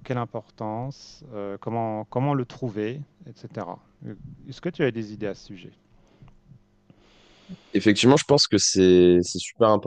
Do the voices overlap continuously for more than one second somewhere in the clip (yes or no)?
no